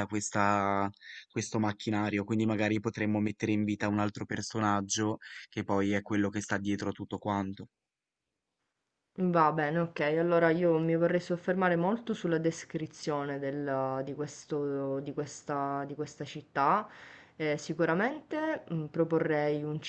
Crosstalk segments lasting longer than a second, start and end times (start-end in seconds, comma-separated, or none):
none